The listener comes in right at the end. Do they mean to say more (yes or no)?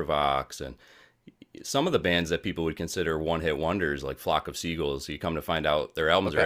no